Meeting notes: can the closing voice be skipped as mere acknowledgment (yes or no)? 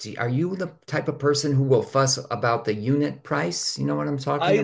no